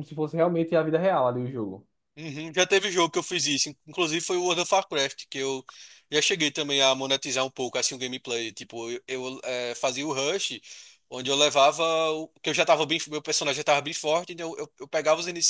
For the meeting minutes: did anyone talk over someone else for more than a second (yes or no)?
no